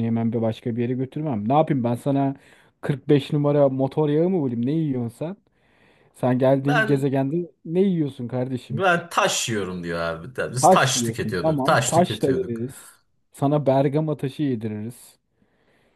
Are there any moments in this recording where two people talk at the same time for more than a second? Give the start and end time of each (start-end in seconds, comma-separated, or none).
10.6-12.6